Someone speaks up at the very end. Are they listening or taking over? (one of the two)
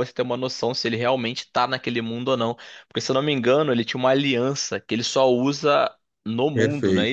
taking over